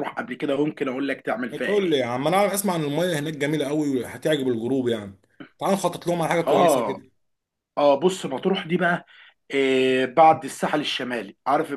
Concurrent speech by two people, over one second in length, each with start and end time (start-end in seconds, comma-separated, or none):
none